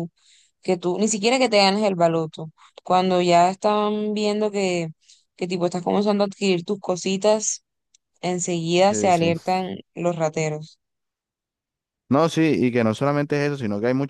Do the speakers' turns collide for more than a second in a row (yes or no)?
no